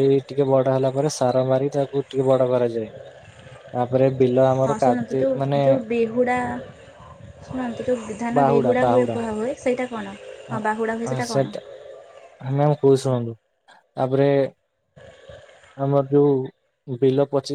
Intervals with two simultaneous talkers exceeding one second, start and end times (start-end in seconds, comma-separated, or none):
none